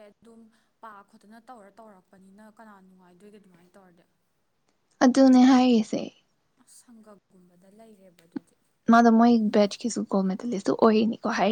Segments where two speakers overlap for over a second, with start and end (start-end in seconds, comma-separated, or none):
none